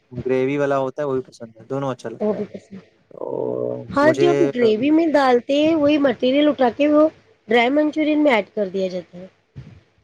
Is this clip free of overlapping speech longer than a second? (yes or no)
no